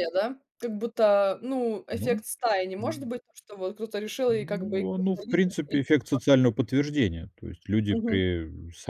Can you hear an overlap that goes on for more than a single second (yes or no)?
yes